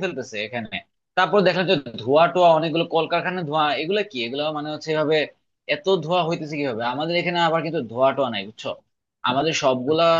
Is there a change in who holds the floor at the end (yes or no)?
no